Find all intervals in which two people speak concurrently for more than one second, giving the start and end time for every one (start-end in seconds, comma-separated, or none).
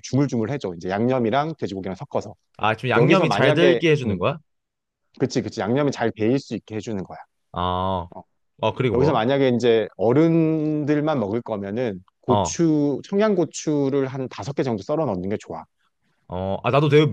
3.0-4.2